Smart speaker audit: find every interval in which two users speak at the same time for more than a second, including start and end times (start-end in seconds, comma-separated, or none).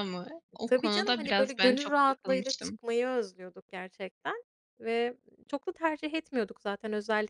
0.7-2.8